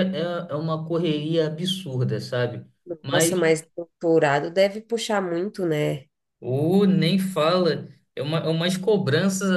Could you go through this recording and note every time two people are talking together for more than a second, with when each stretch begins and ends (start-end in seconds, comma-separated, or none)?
none